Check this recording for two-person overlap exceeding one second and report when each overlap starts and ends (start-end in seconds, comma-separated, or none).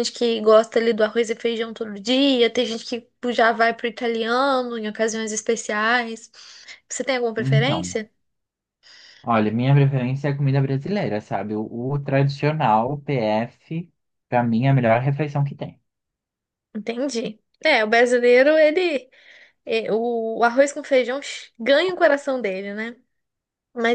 none